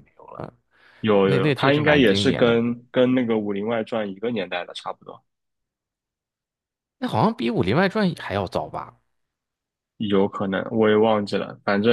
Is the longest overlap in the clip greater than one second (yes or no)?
yes